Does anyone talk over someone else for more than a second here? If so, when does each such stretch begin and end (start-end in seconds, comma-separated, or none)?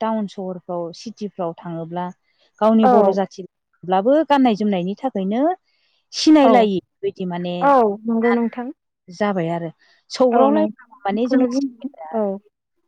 10.3-12.2